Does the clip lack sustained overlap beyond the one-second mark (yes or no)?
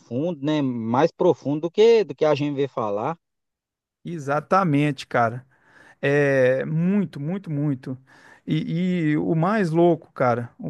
yes